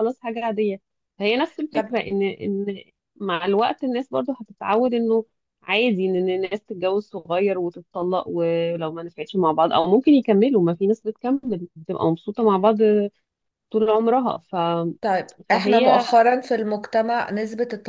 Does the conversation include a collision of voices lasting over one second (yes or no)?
no